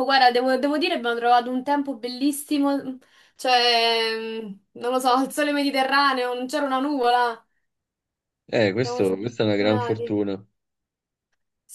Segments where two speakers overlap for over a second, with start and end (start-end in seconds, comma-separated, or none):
8.8-10.2